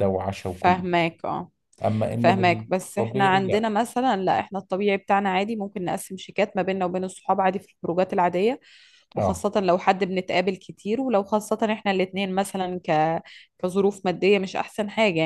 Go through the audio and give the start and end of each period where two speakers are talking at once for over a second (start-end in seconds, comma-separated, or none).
2.1-3.7